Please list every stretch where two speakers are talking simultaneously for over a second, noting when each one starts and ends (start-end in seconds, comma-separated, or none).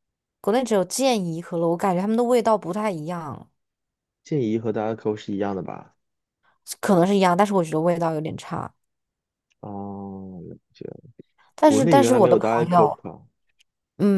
11.7-13.0